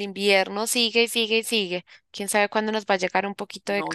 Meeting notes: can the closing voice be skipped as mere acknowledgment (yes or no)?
no